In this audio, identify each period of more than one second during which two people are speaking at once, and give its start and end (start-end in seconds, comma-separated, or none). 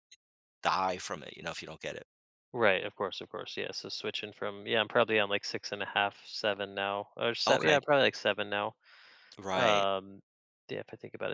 none